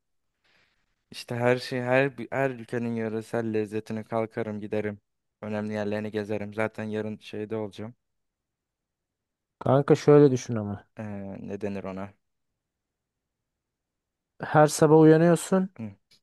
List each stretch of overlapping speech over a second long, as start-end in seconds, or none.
none